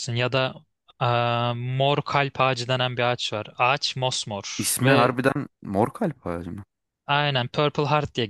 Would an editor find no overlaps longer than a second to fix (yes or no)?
yes